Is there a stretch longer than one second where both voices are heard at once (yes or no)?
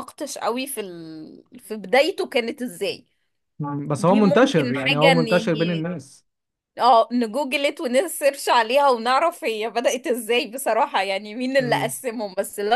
yes